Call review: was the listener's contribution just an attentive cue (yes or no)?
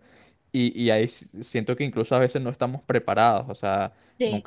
yes